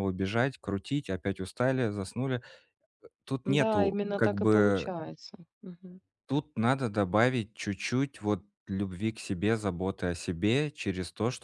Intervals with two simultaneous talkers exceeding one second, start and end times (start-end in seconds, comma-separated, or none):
3.5-4.9